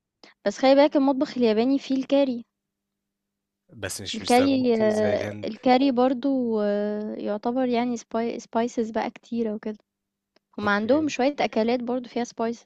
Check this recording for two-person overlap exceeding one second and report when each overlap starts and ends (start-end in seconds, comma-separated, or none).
4.1-5.5